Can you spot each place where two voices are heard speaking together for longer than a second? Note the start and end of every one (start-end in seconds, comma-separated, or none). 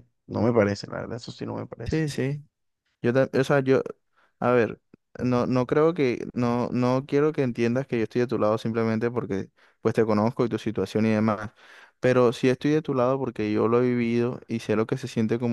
none